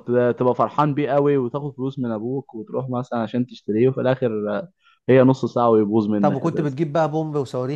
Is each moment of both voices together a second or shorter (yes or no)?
yes